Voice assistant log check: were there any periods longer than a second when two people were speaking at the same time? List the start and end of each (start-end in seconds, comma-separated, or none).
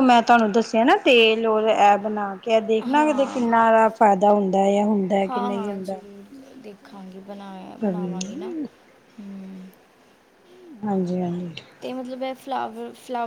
none